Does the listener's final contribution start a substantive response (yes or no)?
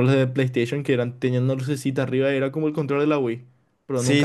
yes